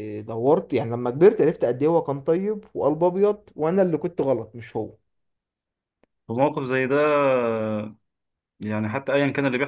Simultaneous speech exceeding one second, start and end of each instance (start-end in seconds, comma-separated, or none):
none